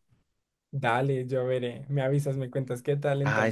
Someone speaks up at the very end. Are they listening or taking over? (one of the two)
taking over